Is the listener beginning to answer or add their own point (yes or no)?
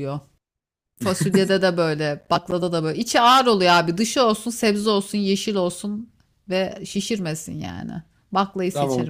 yes